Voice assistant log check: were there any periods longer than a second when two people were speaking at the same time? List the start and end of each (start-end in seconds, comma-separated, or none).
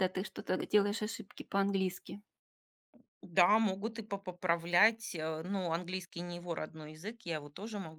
none